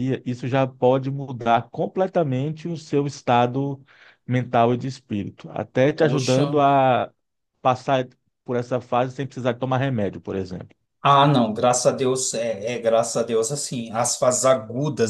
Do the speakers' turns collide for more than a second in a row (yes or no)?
no